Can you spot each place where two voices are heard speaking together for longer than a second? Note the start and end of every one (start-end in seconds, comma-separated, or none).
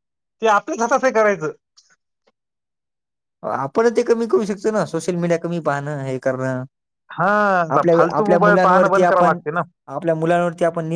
7.8-9.4